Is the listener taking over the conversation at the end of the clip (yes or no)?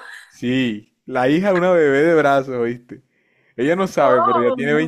no